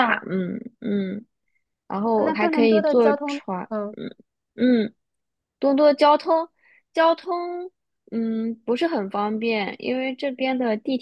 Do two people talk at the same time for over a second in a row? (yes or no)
yes